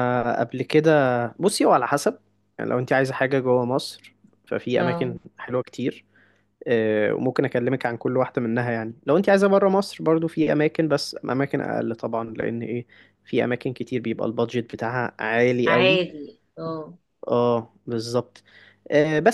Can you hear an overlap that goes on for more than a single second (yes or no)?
no